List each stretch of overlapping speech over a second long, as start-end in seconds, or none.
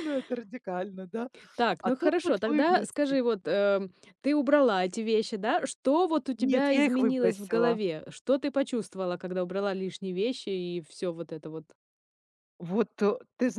1.8-3.2, 6.4-7.8